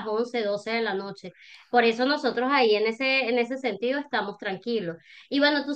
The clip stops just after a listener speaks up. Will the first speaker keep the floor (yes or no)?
yes